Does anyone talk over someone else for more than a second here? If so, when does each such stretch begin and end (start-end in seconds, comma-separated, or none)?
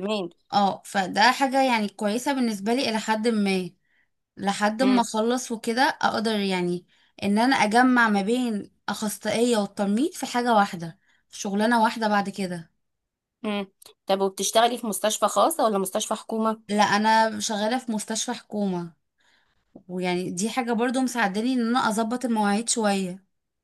none